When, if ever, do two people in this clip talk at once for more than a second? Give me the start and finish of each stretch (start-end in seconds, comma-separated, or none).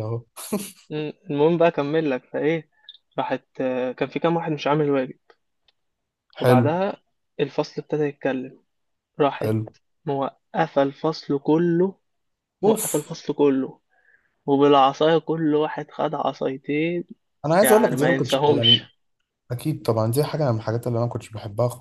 17.6-18.8